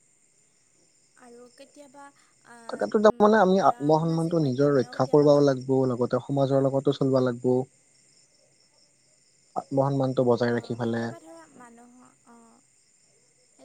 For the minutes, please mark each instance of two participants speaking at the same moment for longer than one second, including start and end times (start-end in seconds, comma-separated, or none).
2.7-5.5